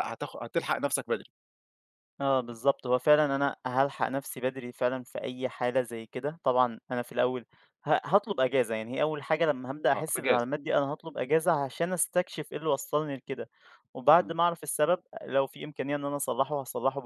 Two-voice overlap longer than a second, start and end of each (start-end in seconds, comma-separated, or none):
none